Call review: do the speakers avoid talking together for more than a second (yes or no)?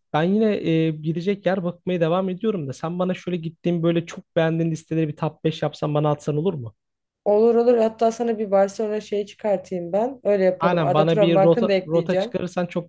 no